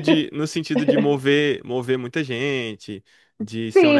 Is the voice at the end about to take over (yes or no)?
yes